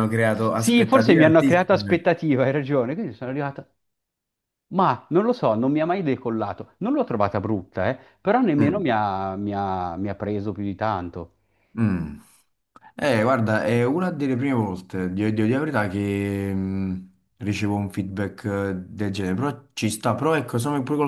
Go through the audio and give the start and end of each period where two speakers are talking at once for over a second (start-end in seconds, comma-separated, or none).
0.5-2.0